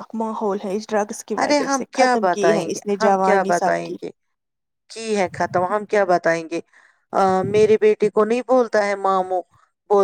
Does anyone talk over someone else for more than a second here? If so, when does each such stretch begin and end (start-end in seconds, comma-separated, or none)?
1.4-4.0